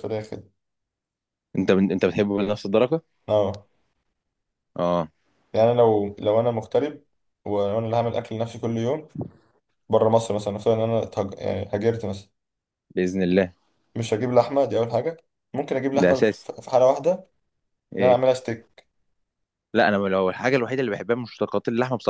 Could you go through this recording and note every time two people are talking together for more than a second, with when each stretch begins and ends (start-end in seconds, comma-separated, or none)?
none